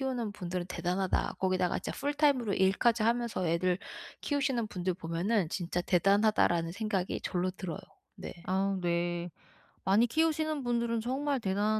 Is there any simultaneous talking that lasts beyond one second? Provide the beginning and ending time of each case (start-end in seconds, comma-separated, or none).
none